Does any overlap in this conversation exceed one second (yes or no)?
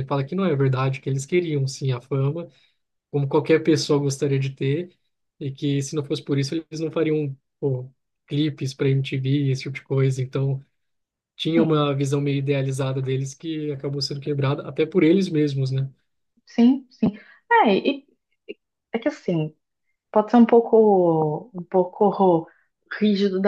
no